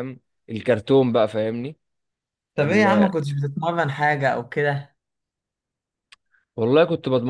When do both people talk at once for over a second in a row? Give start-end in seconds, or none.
none